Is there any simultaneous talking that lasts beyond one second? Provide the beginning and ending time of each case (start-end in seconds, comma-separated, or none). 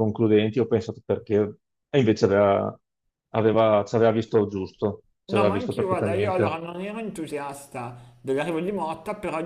5.2-6.6